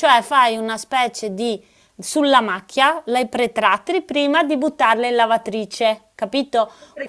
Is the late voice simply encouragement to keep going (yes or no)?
yes